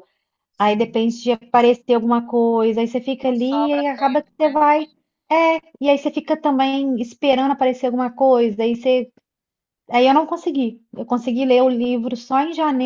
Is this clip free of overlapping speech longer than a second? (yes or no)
no